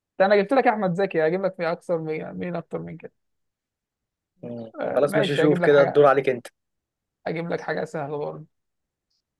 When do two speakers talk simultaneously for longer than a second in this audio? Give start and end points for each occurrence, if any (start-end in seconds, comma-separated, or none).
4.8-6.1